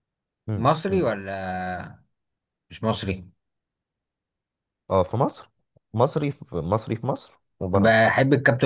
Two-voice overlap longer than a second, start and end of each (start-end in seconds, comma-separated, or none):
none